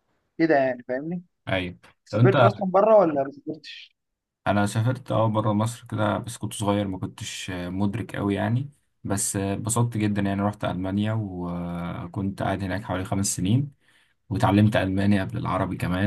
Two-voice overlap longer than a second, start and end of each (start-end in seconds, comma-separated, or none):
none